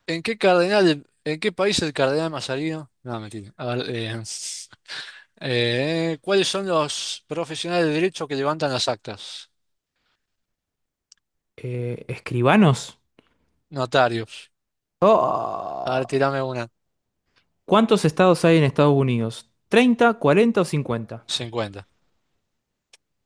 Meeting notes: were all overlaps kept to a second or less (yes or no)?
yes